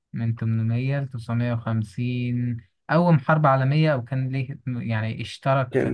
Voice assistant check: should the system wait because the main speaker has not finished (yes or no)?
no